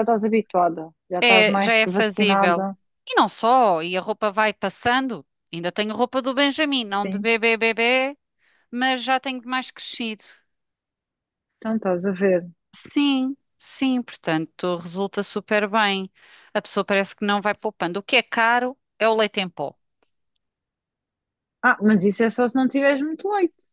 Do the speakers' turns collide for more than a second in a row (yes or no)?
yes